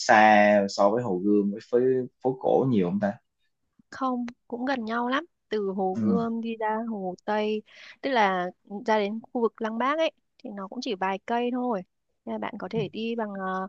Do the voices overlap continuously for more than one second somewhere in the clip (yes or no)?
no